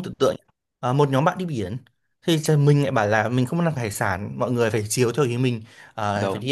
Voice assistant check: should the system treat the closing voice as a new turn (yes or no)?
no